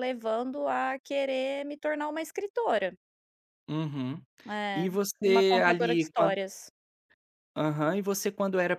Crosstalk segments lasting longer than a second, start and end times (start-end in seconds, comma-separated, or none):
4.7-6.3